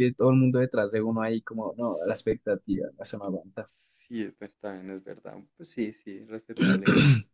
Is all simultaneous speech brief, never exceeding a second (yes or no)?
yes